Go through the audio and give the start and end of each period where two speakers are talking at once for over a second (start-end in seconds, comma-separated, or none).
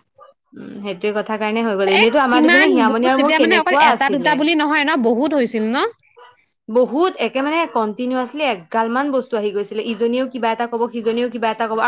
2.0-4.4